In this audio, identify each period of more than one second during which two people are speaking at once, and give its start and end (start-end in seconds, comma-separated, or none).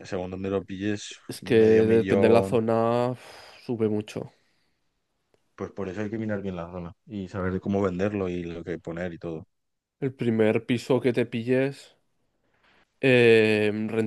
1.3-2.6